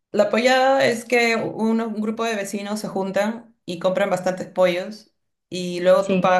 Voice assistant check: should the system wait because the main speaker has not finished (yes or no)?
yes